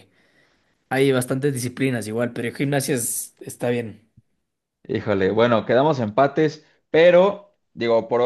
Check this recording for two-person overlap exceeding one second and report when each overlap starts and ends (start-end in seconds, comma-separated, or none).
none